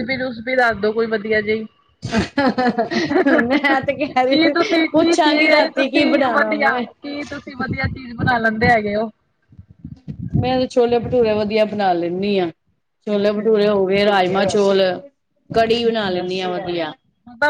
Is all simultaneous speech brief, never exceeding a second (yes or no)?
no